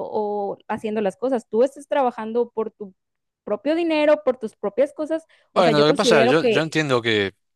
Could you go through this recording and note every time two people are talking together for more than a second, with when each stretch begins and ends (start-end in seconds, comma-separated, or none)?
5.5-6.8